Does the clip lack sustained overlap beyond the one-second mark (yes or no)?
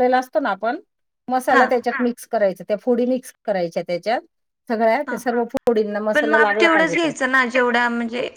no